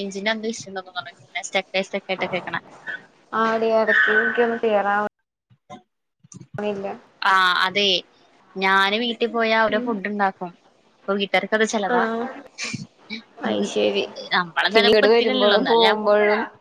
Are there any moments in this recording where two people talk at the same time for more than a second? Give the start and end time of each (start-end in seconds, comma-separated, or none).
14.7-16.0